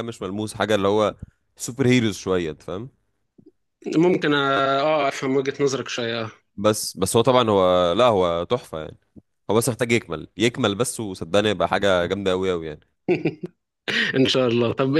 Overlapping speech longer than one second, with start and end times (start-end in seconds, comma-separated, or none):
none